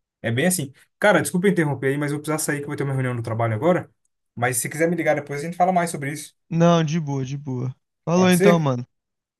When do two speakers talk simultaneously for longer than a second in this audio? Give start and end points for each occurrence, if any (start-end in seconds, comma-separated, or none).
none